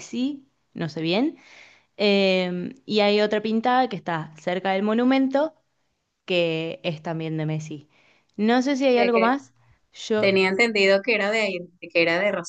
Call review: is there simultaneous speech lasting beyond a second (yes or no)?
no